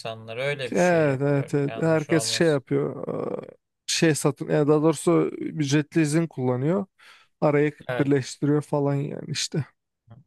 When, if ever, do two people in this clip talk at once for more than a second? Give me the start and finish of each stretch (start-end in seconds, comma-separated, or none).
0.7-2.6